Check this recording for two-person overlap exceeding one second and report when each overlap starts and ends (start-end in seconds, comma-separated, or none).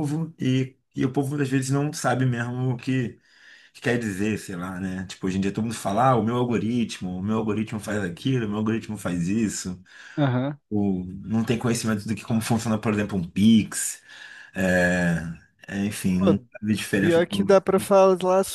none